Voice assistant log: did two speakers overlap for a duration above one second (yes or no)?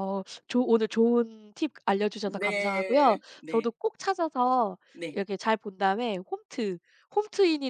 yes